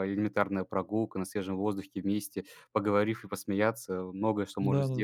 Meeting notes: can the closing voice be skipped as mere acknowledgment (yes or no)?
no